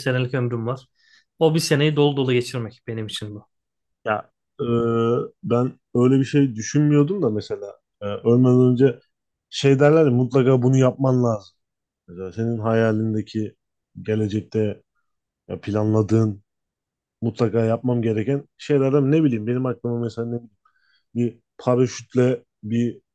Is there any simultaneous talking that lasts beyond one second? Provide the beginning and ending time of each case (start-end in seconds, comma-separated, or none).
none